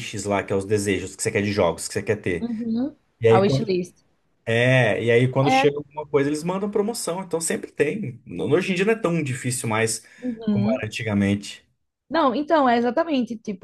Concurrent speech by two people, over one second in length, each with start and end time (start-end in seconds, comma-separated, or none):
none